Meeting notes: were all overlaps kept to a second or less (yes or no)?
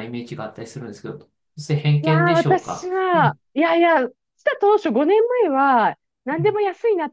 no